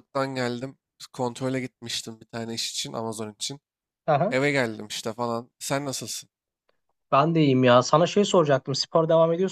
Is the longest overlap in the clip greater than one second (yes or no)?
no